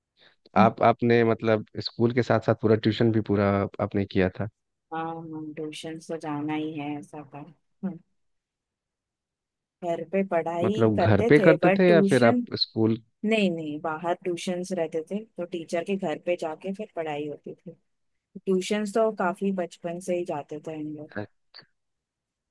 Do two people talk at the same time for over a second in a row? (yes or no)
yes